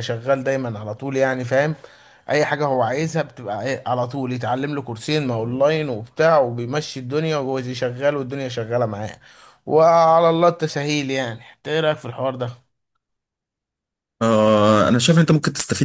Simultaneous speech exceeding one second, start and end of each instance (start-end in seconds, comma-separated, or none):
none